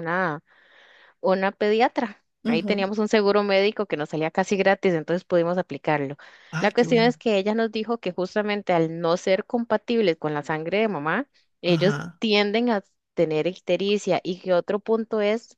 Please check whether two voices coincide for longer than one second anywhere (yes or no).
no